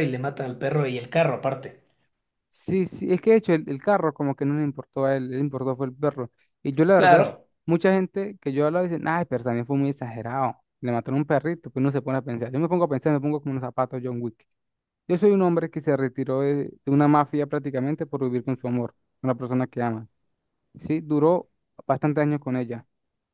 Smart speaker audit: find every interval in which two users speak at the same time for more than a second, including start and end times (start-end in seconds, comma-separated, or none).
none